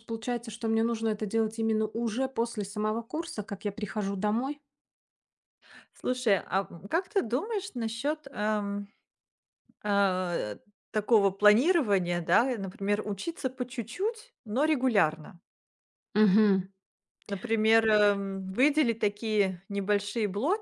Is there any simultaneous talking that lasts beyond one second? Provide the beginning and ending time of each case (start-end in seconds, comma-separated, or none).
none